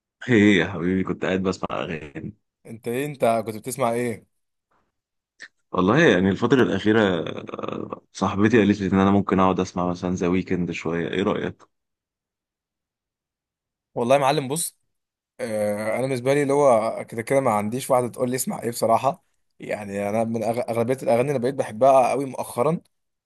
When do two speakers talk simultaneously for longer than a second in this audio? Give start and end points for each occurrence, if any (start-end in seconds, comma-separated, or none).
none